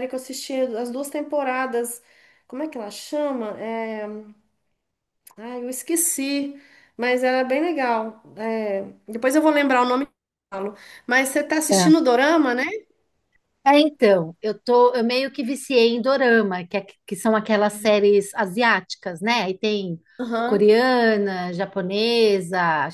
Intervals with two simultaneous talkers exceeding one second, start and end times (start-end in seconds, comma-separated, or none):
none